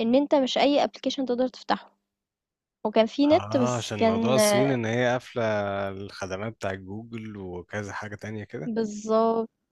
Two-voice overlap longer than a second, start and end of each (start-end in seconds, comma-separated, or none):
3.3-4.8